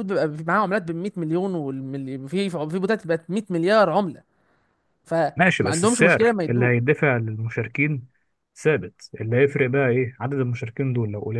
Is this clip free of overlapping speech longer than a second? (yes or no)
no